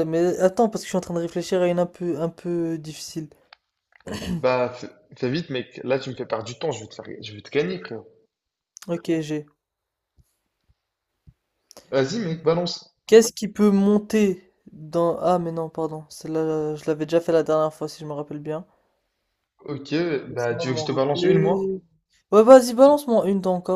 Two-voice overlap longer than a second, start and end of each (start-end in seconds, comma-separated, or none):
20.3-21.7